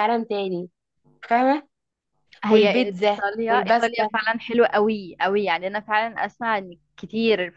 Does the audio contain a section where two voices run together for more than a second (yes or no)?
yes